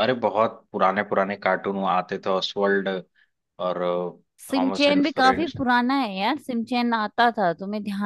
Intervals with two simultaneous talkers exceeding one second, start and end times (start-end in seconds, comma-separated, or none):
none